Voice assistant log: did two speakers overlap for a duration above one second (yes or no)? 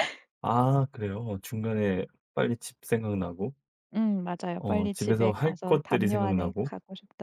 yes